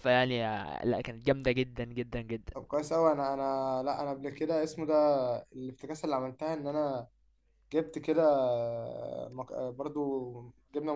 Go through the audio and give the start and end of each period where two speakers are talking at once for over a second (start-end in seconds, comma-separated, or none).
none